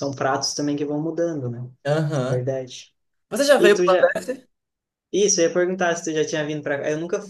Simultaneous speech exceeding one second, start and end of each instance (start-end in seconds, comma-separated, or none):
none